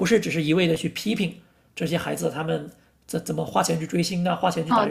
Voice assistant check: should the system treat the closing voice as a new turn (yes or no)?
yes